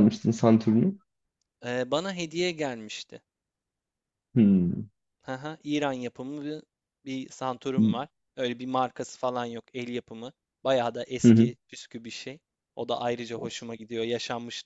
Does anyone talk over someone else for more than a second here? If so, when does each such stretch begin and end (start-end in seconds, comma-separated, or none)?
none